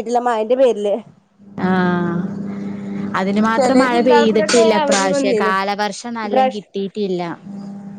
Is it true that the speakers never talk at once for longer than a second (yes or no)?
no